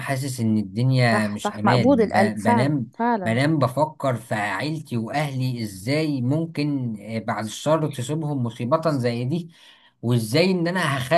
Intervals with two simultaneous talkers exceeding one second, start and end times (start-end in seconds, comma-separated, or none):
1.1-3.4